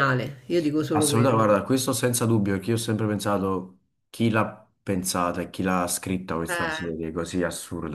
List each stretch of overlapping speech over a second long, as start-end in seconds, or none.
none